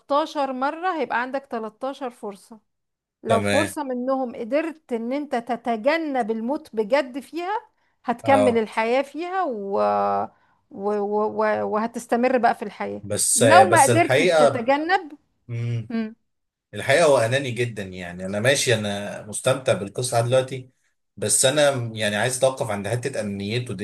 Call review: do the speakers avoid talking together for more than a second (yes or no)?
no